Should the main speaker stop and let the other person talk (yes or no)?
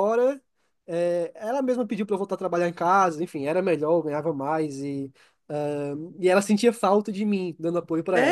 yes